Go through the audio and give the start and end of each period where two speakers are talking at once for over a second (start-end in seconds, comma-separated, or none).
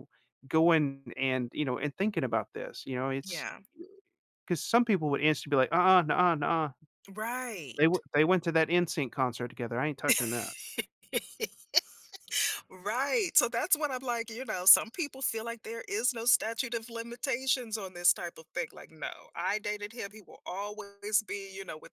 none